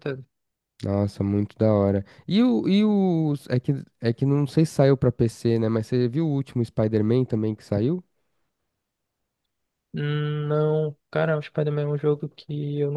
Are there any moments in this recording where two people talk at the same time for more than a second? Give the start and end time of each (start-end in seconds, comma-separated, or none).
none